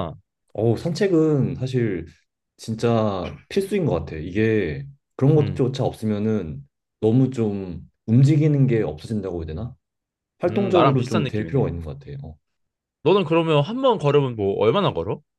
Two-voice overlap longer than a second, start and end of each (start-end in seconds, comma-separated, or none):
10.5-11.7